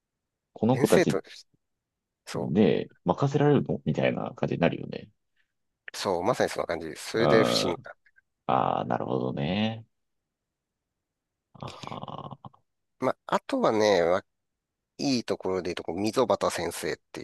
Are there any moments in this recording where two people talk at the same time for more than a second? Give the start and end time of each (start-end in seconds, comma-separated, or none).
none